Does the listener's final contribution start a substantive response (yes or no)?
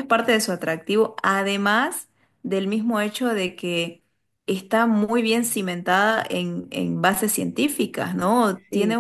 no